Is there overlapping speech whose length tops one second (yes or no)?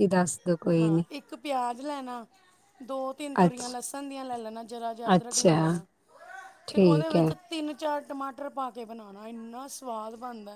no